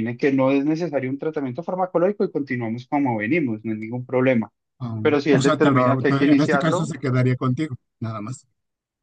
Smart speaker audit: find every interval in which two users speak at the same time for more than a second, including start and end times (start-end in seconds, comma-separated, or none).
5.0-6.9